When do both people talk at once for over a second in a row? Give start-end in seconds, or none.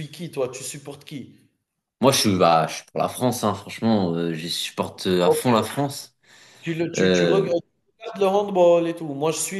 none